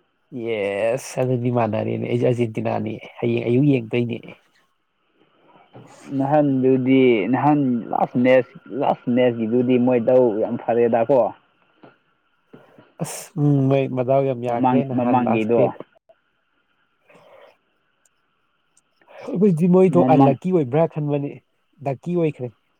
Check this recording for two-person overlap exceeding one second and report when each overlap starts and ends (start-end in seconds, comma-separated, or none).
14.5-15.7